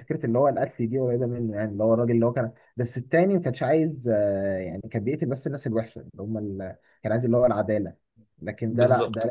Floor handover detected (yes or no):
no